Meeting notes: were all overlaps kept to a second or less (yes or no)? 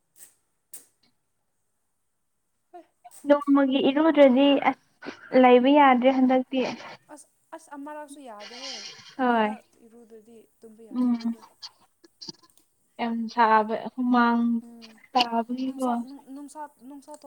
yes